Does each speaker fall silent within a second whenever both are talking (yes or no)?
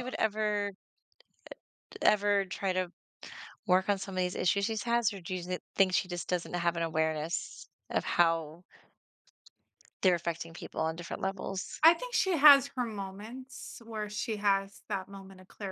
yes